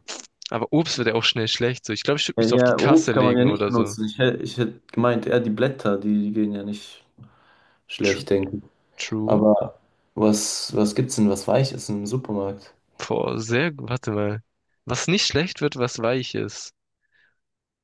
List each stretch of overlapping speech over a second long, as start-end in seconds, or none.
2.4-4.0